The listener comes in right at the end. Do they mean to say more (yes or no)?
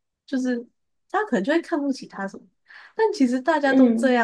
no